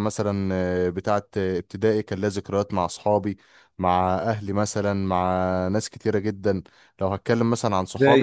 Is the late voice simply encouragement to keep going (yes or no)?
yes